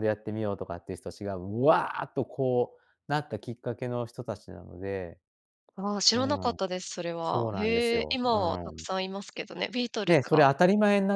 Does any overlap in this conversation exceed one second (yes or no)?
yes